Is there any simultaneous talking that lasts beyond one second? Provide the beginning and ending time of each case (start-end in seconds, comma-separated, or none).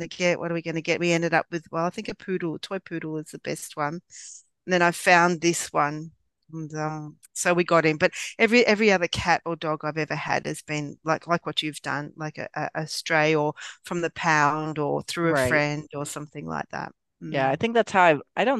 none